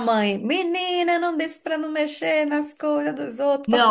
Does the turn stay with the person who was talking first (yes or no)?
no